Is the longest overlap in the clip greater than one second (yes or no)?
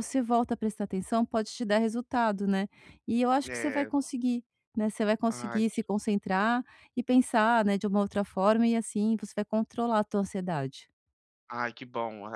no